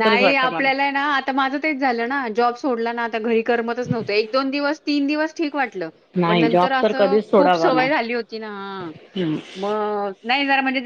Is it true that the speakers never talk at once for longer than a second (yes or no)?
no